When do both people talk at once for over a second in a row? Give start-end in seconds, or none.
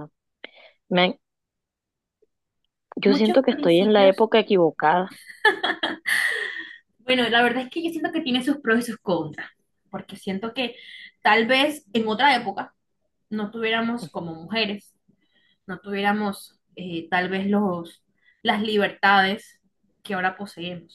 3.0-4.2